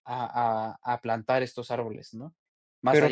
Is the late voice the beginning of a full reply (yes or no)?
yes